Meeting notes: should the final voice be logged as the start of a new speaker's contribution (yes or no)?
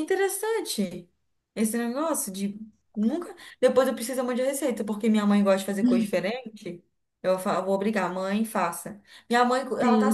no